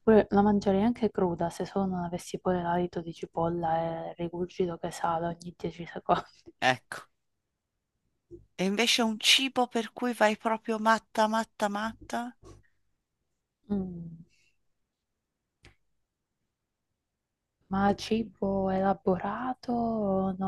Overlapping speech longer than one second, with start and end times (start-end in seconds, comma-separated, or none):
none